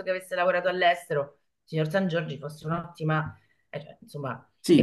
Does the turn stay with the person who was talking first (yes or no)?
yes